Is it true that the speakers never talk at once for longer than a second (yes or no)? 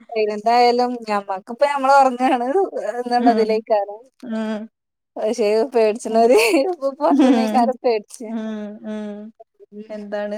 yes